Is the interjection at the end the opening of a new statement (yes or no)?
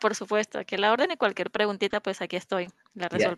yes